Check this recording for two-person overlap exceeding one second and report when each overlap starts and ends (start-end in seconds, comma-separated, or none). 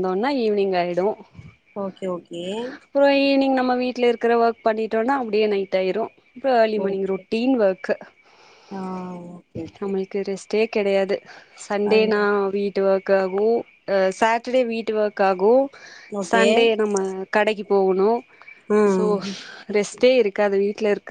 none